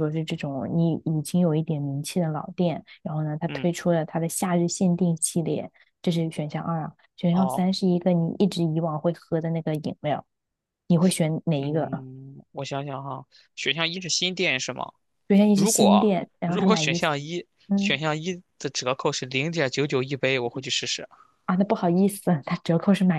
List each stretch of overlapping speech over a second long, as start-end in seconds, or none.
15.5-17.0